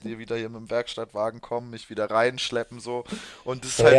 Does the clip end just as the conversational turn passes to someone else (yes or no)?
yes